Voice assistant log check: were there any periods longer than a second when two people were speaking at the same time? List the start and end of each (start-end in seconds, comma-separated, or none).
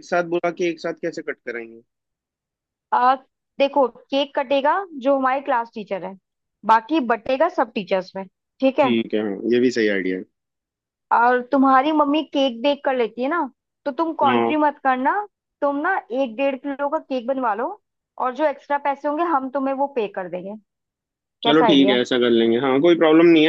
none